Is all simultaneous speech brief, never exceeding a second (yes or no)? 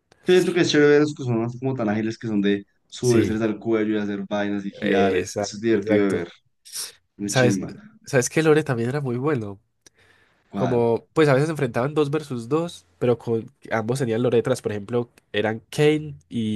no